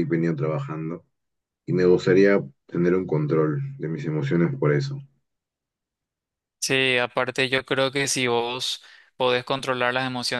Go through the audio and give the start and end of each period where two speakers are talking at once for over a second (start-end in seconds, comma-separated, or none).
none